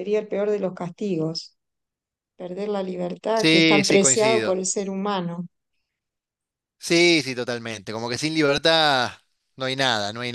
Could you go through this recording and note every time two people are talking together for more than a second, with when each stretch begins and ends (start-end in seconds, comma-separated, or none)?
3.4-4.6